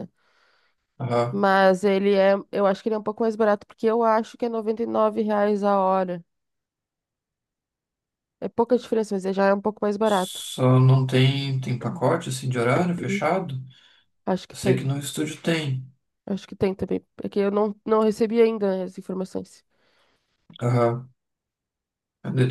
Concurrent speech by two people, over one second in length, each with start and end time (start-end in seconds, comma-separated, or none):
none